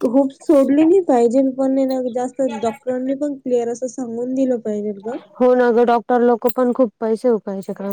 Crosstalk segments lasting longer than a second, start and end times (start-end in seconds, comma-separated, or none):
none